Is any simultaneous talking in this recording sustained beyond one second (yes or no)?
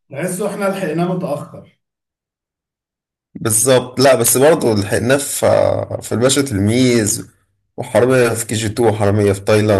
no